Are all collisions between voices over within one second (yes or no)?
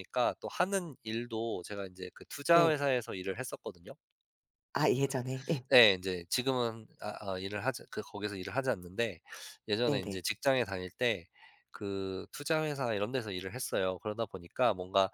yes